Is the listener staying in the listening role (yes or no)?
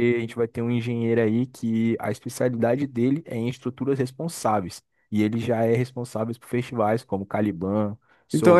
no